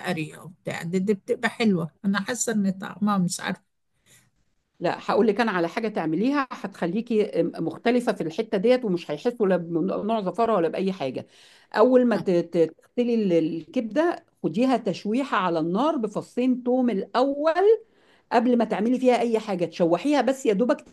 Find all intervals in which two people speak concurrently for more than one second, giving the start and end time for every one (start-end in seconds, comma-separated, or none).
none